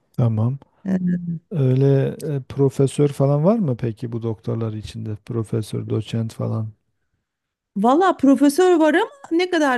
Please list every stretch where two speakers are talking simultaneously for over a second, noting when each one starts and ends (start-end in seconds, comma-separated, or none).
none